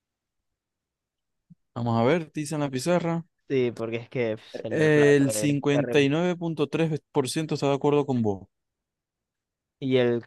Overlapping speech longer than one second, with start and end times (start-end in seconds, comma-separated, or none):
4.7-6.1